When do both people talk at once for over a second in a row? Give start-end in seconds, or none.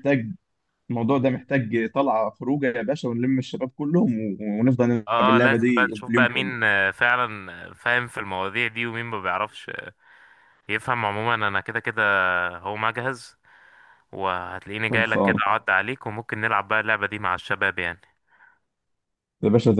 5.1-6.5